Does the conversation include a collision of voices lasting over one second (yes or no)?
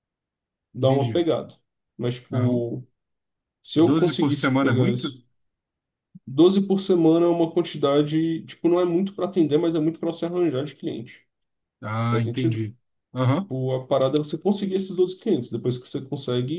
yes